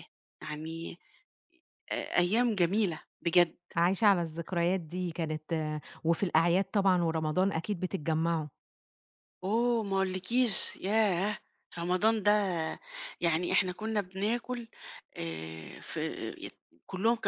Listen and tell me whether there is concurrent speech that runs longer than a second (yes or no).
no